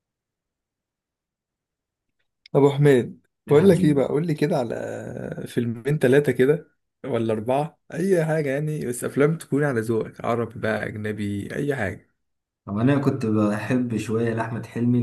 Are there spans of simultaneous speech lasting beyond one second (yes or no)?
no